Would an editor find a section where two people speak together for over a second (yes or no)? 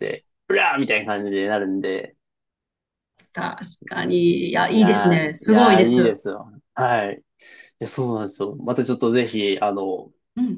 yes